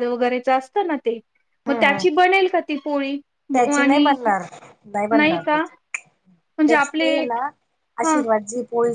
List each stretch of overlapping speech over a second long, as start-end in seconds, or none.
none